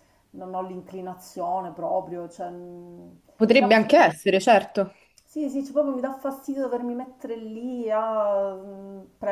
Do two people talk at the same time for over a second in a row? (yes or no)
no